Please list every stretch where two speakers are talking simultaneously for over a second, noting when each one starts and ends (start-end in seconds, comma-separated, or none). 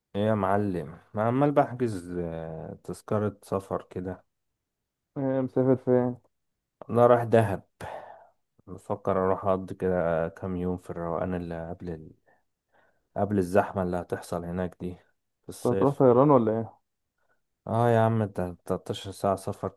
none